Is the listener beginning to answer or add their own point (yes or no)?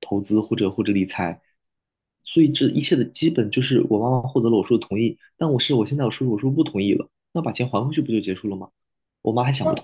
yes